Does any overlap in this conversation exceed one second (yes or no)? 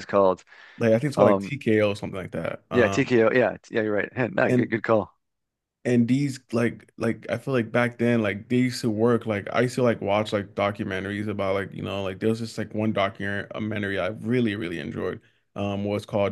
no